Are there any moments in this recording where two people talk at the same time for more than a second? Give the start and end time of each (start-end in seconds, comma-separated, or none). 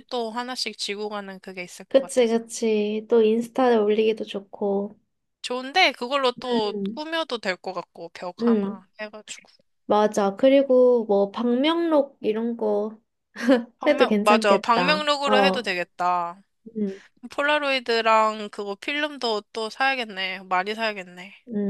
13.9-15.7